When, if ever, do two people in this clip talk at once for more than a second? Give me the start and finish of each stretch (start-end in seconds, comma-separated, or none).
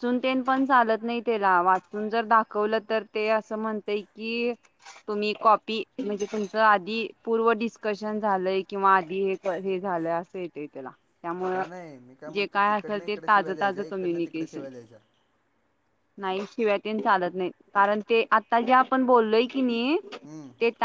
12.3-14.7